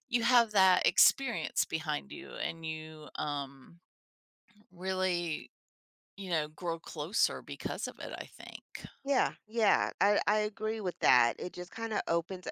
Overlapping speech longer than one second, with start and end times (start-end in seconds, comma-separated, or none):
none